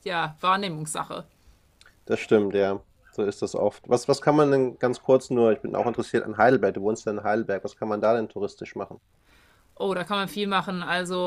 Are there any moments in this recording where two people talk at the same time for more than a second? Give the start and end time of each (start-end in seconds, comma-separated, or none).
none